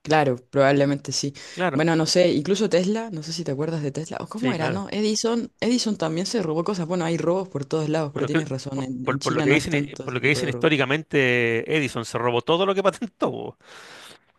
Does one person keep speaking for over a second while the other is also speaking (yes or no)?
yes